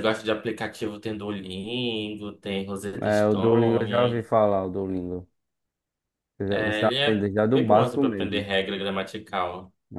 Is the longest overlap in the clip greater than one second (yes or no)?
yes